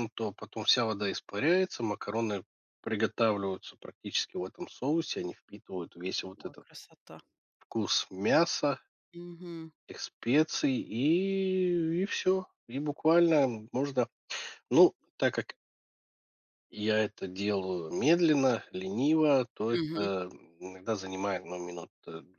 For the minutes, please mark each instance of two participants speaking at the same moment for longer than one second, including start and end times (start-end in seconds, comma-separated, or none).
none